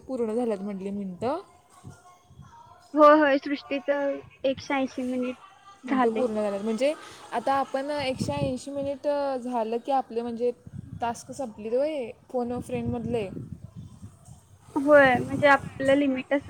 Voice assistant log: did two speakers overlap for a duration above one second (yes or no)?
no